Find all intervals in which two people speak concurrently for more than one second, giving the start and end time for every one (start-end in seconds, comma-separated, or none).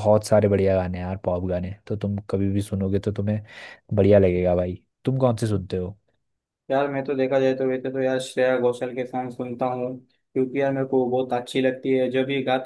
none